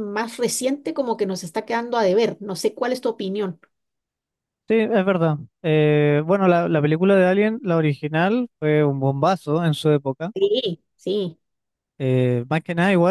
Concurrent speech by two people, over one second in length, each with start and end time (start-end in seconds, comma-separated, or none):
none